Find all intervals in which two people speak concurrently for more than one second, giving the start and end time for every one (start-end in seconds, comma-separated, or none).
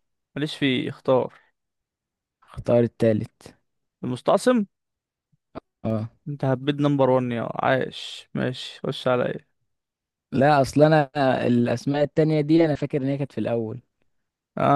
none